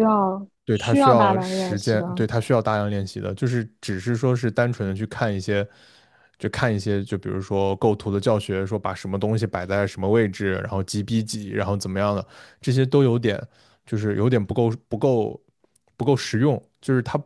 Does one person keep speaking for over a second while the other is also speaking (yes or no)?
yes